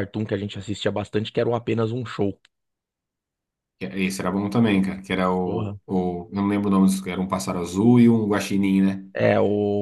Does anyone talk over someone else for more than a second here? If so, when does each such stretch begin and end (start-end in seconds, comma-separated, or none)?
none